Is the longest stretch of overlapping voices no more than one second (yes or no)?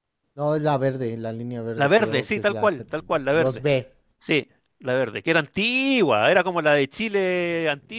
no